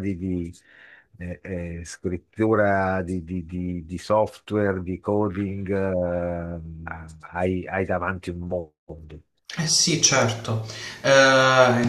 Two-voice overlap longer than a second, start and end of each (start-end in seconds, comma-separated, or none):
none